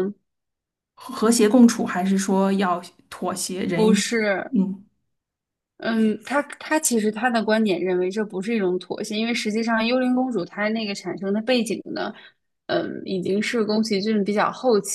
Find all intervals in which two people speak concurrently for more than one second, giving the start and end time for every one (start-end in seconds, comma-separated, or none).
none